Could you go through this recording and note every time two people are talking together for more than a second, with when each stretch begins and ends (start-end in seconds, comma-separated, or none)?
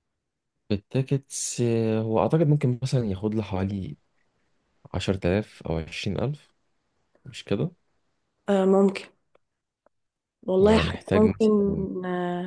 10.6-11.9